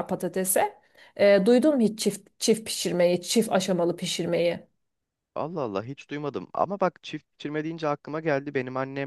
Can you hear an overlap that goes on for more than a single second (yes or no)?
no